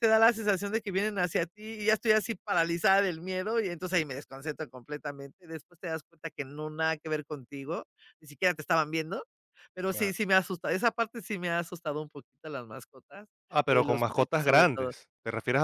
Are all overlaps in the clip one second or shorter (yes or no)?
no